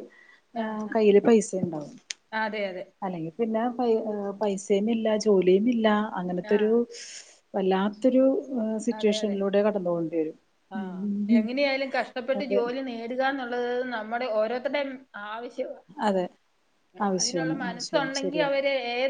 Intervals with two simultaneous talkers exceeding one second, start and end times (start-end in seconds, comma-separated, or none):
17.2-18.6